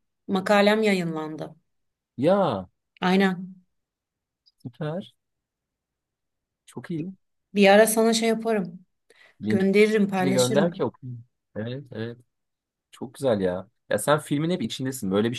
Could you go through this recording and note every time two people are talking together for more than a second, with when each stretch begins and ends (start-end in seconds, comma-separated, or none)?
9.5-10.7